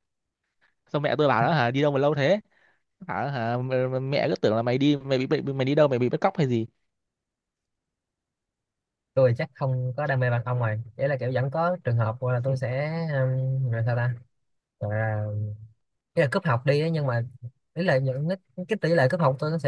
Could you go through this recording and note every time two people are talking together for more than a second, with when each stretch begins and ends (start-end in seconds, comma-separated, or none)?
none